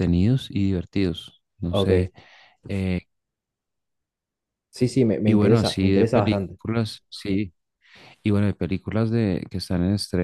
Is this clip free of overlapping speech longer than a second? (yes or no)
no